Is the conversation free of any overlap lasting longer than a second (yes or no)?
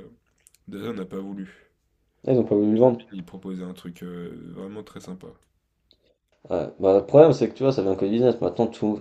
yes